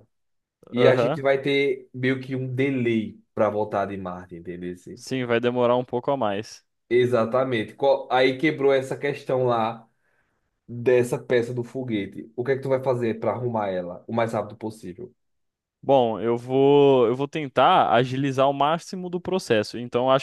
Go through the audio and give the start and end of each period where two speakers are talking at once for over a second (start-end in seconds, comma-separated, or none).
none